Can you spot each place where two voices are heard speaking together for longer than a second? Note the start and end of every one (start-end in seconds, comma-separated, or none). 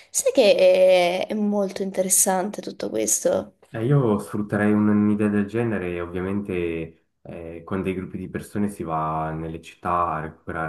none